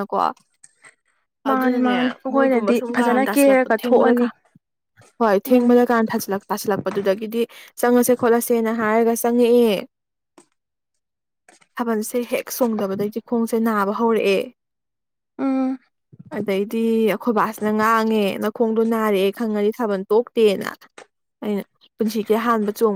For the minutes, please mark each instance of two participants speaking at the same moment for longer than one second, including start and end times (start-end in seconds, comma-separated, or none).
1.5-4.3